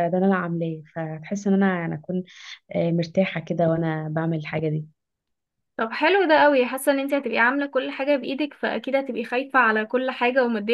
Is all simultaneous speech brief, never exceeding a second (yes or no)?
yes